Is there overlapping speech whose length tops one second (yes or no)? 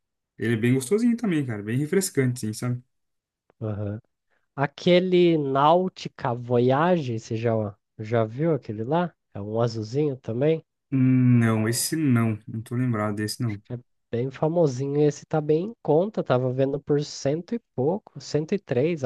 no